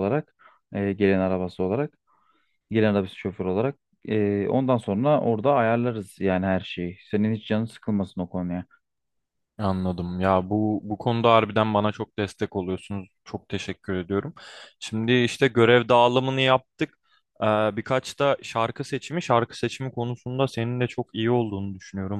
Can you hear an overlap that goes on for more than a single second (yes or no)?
no